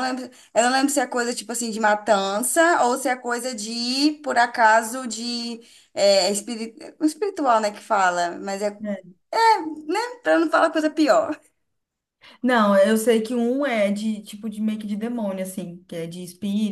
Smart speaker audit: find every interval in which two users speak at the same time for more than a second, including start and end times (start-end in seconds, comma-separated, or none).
none